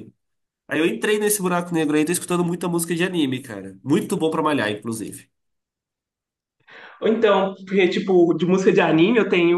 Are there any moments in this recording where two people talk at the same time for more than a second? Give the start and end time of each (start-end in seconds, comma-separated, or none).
none